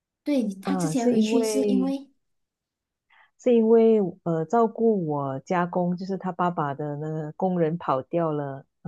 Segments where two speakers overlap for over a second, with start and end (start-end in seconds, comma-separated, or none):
0.6-1.9